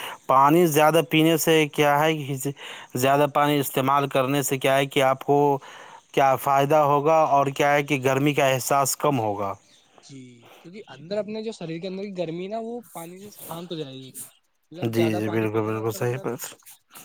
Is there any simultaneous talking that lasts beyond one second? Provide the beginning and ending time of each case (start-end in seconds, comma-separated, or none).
14.8-16.3